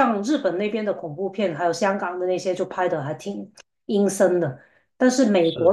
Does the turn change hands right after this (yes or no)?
no